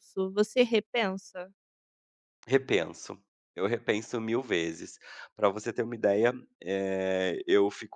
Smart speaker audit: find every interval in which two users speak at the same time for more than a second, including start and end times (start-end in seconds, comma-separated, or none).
none